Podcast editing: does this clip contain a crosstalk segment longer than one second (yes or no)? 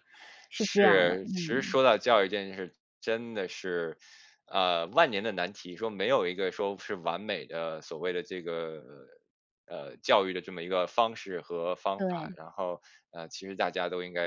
yes